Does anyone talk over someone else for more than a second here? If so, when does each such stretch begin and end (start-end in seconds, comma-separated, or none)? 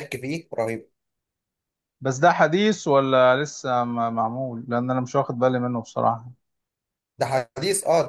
none